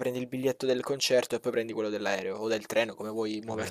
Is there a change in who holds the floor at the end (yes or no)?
yes